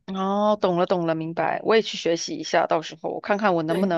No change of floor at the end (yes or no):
yes